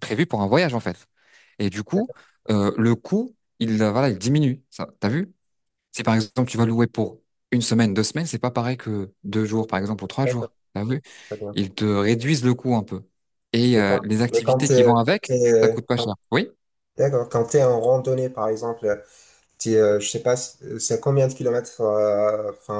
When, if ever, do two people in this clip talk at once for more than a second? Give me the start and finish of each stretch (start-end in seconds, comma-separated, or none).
13.7-16.1